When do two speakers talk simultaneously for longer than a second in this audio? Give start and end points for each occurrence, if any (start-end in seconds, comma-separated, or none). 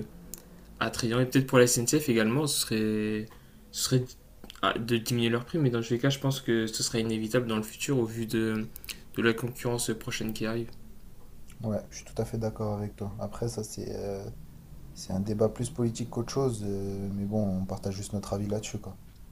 none